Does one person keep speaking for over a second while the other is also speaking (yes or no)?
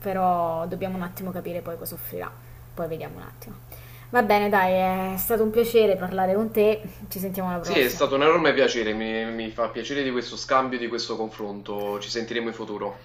no